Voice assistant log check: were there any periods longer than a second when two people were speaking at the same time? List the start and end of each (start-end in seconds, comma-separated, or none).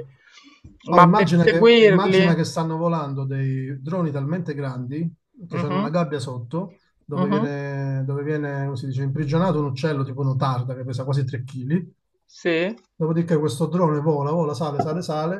0.9-2.4